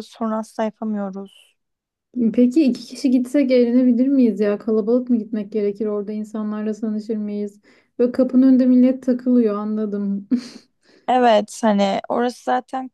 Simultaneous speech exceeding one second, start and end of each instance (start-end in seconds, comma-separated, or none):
none